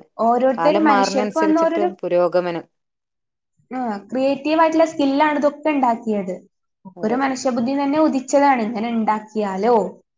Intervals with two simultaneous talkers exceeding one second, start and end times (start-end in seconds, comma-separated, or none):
0.6-1.9